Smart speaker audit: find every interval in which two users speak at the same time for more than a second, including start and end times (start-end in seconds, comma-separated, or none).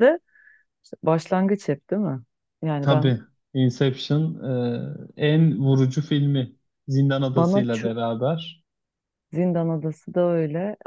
none